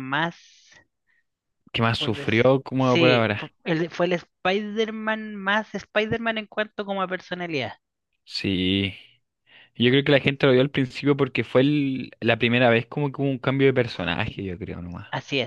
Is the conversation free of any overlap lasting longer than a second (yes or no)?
no